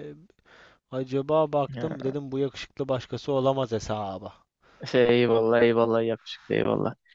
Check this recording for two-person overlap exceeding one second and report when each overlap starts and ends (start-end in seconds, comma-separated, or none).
none